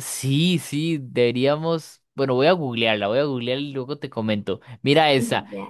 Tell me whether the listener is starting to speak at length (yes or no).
no